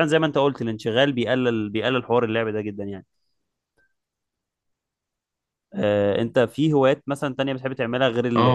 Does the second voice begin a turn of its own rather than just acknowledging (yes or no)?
yes